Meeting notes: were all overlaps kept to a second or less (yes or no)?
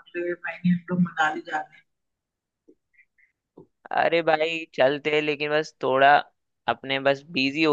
yes